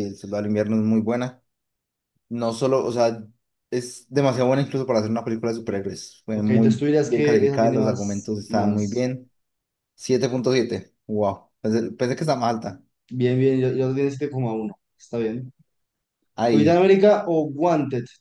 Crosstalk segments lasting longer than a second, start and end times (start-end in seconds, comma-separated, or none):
6.3-9.1